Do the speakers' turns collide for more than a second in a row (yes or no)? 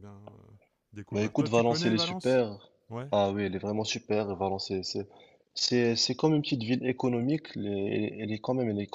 yes